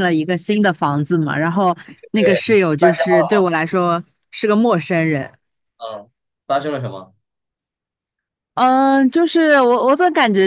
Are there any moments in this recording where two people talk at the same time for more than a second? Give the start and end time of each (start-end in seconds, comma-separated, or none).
2.1-3.4